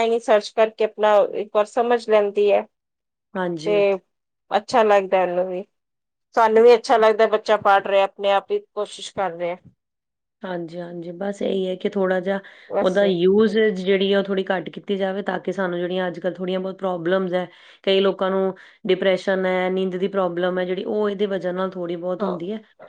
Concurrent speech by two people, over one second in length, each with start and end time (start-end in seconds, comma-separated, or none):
none